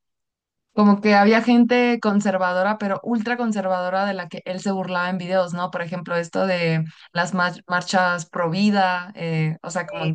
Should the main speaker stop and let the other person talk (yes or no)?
no